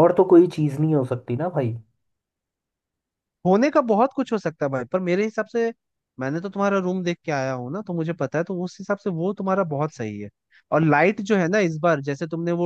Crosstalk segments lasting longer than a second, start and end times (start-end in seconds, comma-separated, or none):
none